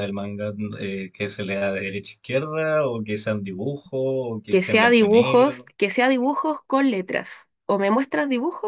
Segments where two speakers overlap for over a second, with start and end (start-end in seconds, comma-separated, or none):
4.5-5.7